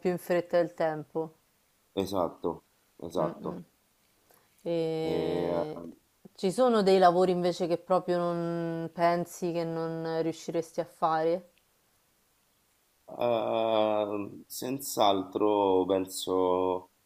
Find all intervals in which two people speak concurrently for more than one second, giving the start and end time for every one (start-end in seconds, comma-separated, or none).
none